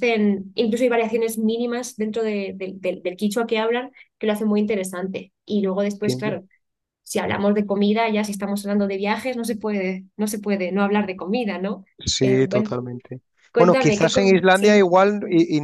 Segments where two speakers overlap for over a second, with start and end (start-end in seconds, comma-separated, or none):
13.6-14.9